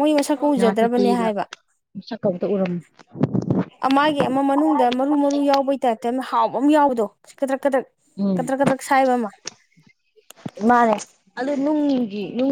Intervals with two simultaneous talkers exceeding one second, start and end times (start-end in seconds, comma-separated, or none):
none